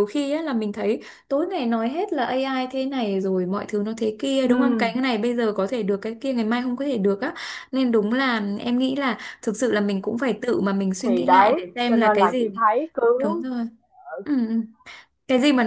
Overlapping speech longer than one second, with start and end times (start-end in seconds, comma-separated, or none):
11.0-12.5